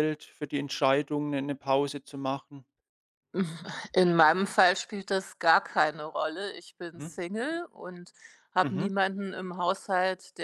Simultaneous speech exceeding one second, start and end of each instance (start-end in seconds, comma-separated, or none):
none